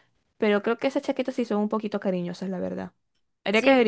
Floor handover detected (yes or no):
yes